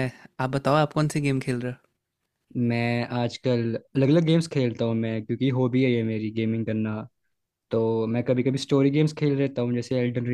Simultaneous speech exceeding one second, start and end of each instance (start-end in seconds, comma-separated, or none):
none